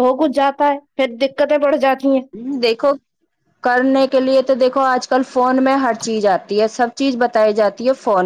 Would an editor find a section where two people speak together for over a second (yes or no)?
no